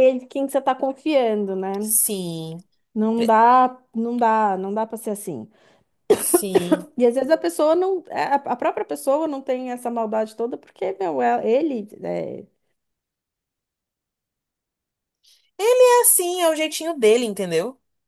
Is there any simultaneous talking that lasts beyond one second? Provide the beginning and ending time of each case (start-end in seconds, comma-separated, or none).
none